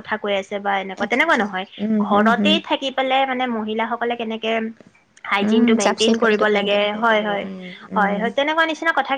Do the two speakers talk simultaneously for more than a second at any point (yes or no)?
yes